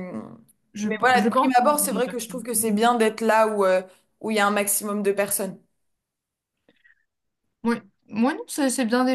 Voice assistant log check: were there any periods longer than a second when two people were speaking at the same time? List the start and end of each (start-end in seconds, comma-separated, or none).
0.8-2.4